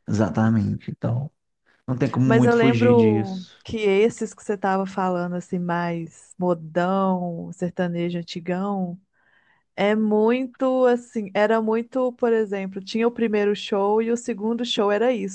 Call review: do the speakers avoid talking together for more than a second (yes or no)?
no